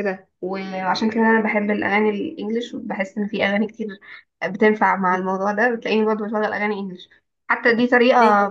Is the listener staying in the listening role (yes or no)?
yes